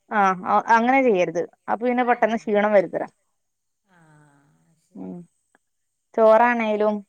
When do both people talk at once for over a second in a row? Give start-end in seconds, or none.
none